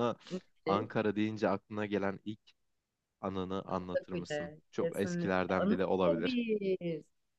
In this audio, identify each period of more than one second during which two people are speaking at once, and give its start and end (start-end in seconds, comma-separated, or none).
3.7-6.4